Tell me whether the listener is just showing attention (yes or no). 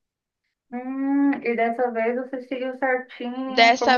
no